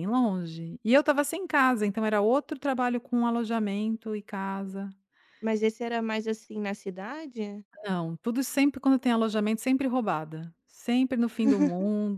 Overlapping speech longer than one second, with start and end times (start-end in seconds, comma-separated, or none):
none